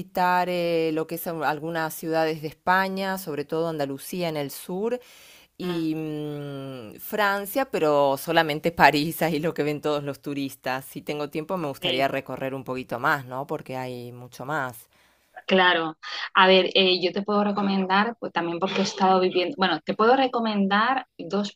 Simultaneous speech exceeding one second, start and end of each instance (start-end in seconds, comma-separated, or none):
none